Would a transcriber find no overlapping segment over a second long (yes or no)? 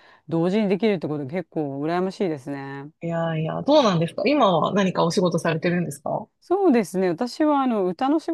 yes